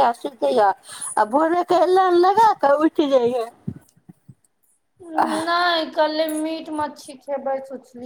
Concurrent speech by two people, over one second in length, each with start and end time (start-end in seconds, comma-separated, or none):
none